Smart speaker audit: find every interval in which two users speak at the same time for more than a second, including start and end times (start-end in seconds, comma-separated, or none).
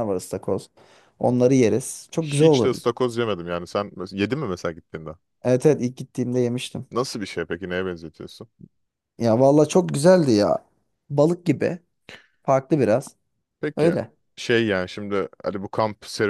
none